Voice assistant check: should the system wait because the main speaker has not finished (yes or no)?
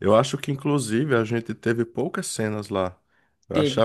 yes